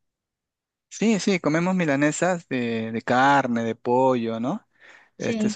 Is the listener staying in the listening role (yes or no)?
yes